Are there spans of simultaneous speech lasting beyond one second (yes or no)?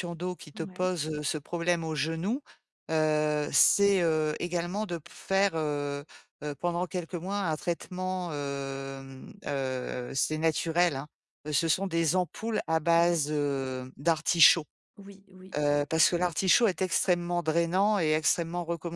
no